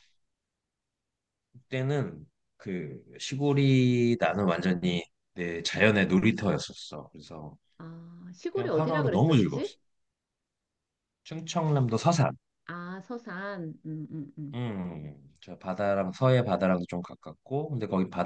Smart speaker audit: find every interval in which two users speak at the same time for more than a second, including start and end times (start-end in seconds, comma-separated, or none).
8.5-9.7